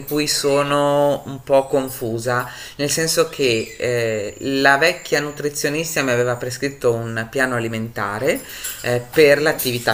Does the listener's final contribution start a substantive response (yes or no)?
no